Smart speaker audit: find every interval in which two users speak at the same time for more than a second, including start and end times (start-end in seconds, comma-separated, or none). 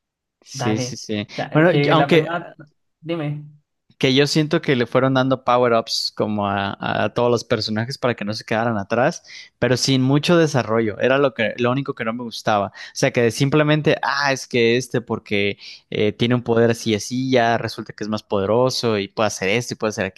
0.5-2.3